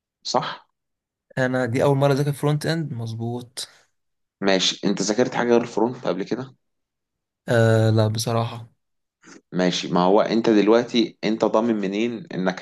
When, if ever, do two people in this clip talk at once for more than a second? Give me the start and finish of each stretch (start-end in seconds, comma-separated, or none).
none